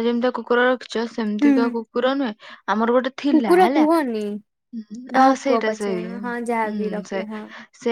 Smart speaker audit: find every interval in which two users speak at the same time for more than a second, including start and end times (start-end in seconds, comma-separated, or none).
5.2-7.2